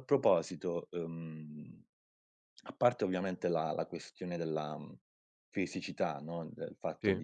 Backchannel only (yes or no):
yes